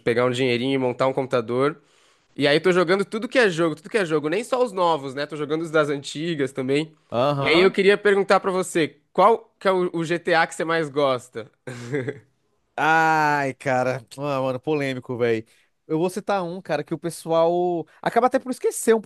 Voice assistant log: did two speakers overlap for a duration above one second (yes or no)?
no